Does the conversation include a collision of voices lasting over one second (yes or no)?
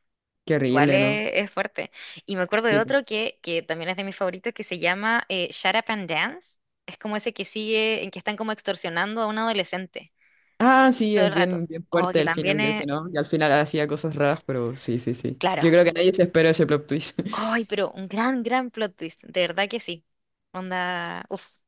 yes